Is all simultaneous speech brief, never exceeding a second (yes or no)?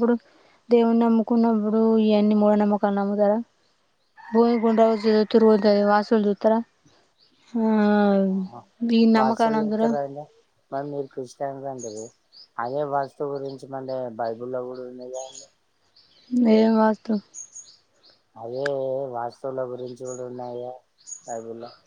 yes